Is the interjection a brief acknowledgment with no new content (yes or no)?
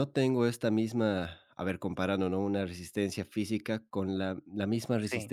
yes